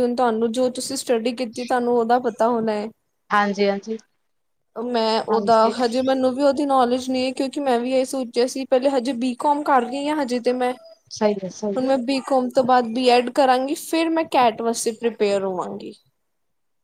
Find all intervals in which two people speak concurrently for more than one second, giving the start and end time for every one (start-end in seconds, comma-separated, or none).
none